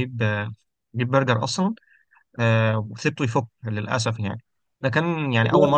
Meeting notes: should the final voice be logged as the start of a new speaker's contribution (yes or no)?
no